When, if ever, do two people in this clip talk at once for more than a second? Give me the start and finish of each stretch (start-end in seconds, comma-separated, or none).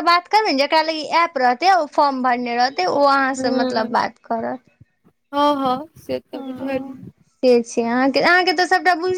none